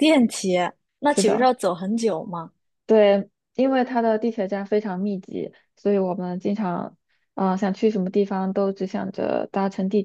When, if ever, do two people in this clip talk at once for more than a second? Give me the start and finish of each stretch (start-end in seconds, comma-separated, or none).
none